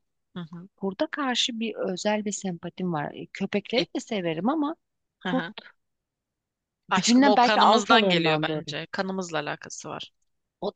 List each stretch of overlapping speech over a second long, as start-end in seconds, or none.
6.9-8.7